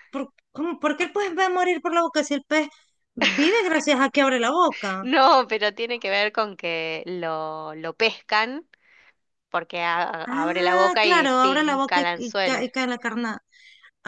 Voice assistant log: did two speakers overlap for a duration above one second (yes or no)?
yes